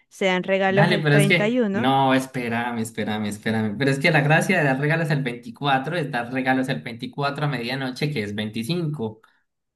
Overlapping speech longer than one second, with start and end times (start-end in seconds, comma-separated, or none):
0.7-1.9